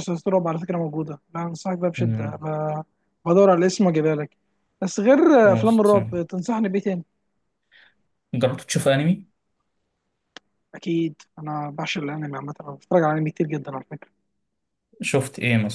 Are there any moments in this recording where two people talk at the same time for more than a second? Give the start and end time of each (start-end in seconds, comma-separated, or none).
none